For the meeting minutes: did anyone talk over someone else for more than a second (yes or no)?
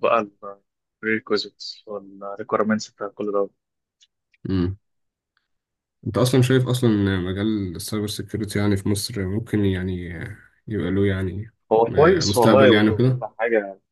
yes